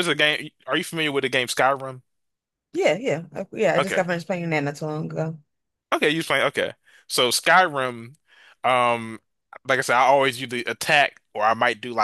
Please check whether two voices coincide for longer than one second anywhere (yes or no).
no